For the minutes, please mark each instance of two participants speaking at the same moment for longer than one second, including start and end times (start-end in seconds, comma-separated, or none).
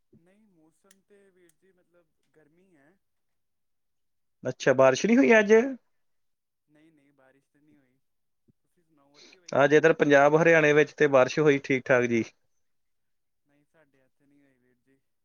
none